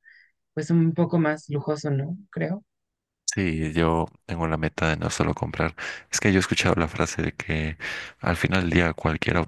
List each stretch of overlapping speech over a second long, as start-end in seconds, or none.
none